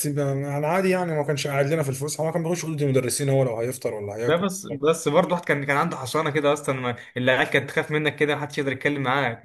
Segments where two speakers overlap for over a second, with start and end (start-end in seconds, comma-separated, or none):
none